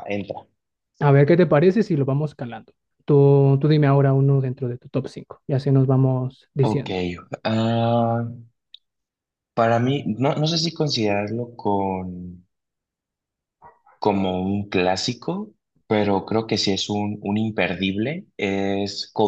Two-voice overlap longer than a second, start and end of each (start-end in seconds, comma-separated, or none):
none